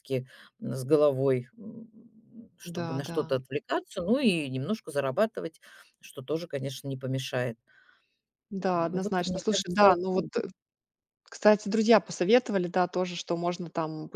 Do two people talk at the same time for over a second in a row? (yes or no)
yes